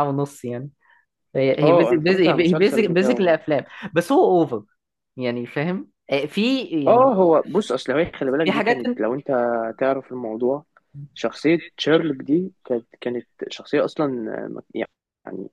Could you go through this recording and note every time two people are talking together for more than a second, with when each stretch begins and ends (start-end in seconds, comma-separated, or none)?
1.6-3.4